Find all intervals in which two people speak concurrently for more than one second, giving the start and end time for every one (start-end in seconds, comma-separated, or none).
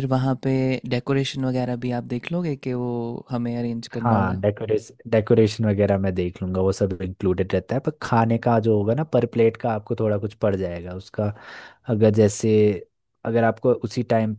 none